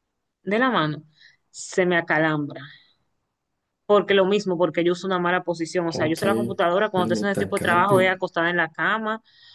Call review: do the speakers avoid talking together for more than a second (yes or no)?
no